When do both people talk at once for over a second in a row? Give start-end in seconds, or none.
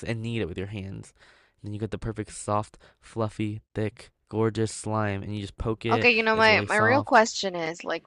5.9-7.2